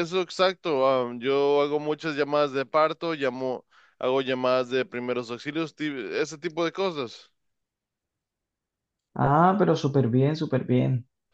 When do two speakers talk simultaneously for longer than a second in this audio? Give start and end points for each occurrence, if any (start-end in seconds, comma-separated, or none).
none